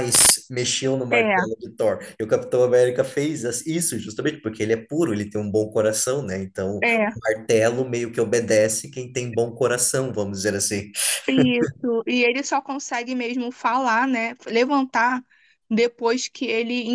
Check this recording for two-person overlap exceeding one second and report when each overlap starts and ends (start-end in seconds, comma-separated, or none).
none